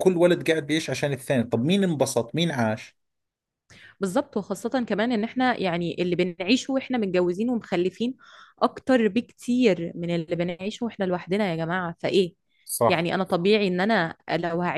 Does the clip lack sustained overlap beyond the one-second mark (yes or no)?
yes